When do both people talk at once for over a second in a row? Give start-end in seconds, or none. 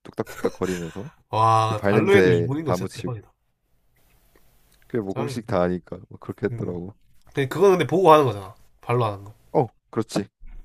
1.8-3.1